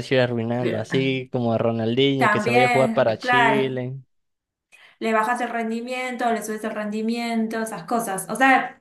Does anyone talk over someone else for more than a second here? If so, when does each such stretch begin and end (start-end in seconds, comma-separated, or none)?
2.2-3.8